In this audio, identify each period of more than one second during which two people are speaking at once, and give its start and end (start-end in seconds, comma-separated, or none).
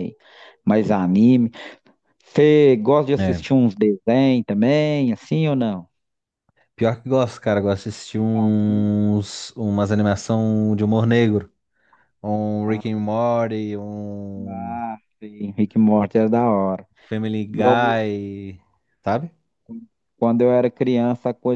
none